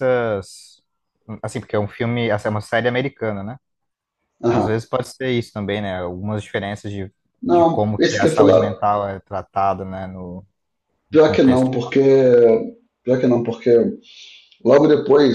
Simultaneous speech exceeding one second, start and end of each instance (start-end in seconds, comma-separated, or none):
7.4-8.7